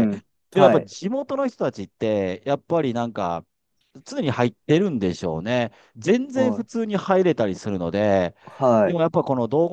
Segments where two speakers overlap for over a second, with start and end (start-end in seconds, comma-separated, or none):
none